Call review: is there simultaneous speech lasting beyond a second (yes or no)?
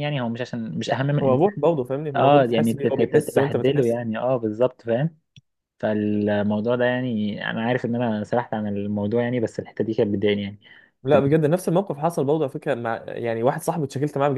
yes